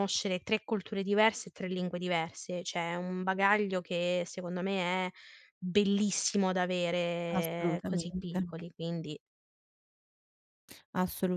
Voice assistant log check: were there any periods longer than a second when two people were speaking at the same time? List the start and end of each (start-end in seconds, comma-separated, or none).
7.3-8.5